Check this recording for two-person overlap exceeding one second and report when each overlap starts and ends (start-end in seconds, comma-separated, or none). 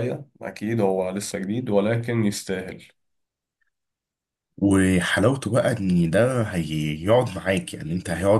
none